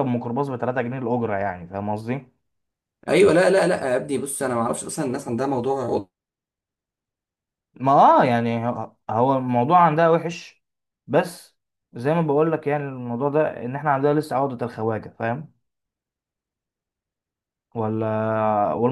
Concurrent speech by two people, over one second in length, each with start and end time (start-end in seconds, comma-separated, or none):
none